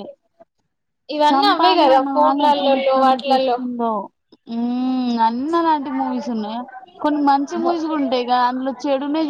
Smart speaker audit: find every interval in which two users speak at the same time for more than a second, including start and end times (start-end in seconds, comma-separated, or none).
1.3-3.6